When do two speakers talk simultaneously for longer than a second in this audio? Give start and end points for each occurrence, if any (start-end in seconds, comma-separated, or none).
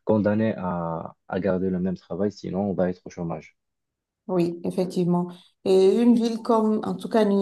none